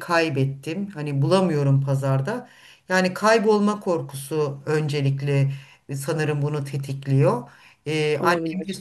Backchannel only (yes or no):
yes